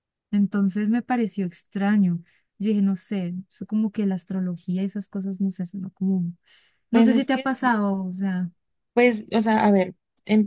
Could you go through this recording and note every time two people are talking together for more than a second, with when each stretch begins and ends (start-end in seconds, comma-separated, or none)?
none